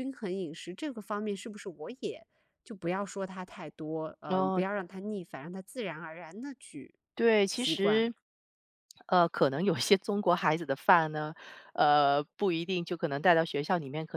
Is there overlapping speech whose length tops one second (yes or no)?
no